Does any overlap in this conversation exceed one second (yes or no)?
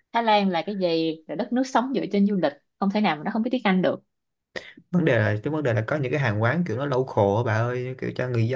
no